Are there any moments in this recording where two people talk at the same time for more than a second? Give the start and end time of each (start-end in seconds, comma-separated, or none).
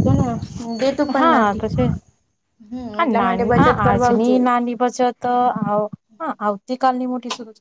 none